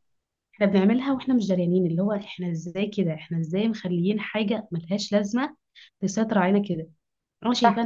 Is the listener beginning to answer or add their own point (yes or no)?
no